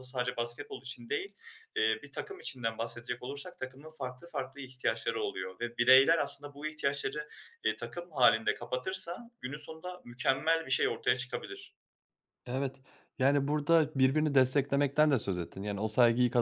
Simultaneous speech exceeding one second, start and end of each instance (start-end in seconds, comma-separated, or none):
none